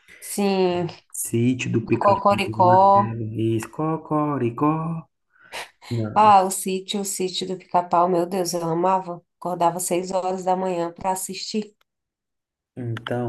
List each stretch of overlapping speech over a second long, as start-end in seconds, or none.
1.9-3.2